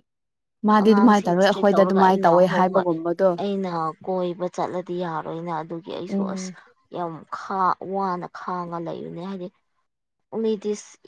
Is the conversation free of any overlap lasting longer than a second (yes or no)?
no